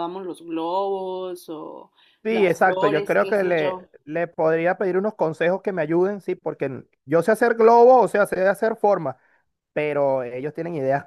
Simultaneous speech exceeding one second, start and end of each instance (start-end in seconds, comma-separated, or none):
2.3-3.9